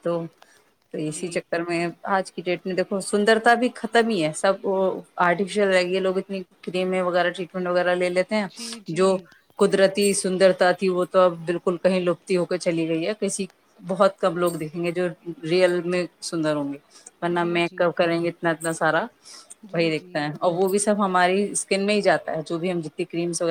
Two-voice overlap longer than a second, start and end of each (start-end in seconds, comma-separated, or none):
none